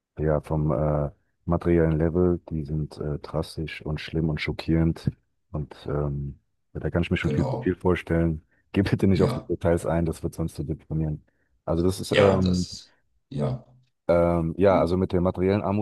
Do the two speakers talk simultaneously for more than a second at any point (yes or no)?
no